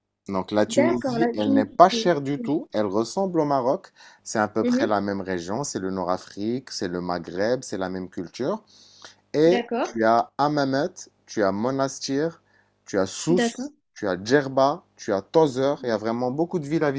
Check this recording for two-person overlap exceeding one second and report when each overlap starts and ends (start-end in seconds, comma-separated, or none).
0.7-2.1